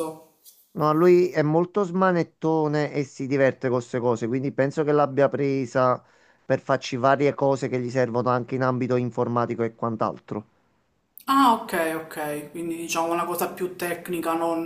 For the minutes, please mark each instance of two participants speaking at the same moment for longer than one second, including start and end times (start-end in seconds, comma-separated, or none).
none